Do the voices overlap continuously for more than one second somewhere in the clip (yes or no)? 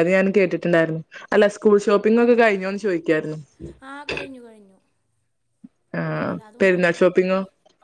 no